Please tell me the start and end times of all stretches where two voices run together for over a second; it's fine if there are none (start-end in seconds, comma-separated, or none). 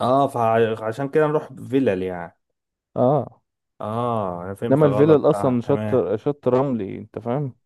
4.7-6.0